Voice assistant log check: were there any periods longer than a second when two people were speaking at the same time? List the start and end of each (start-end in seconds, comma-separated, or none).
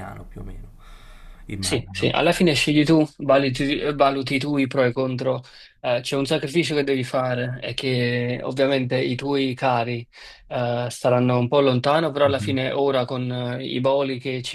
none